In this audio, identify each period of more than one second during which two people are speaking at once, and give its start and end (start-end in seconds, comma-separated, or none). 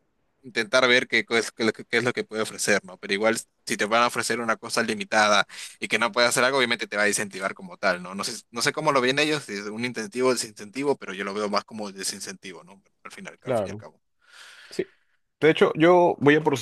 none